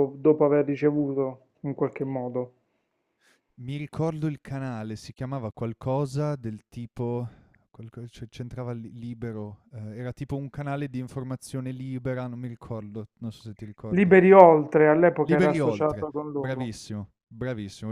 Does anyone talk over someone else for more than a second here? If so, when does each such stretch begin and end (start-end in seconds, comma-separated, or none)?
15.2-16.7